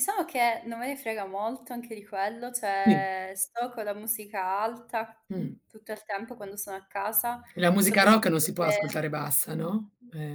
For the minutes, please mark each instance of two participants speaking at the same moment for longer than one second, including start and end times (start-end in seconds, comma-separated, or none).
7.8-9.0